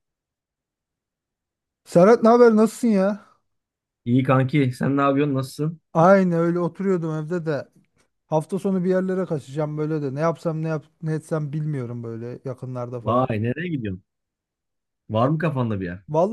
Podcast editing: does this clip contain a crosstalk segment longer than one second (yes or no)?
no